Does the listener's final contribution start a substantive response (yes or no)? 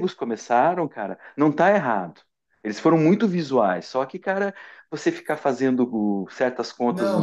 yes